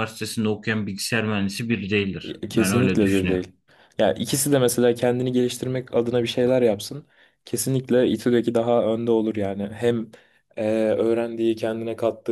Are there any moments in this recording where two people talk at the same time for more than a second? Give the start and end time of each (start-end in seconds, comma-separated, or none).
2.2-3.5